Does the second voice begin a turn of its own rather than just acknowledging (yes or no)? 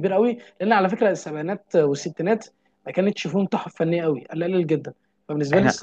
no